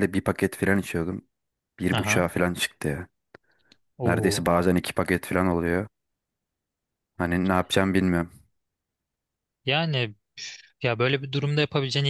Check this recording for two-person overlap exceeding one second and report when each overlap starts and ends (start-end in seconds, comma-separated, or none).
none